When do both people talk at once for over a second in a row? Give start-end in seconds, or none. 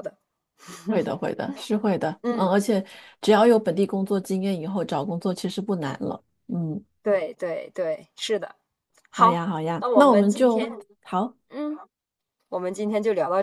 9.1-10.7